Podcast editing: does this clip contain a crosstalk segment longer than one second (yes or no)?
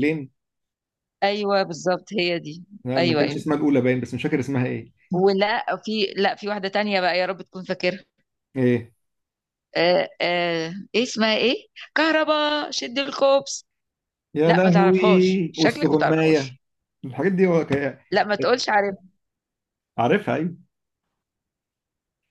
yes